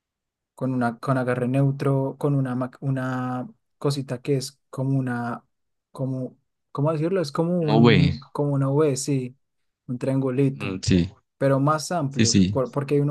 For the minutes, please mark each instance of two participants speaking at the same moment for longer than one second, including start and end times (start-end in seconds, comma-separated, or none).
none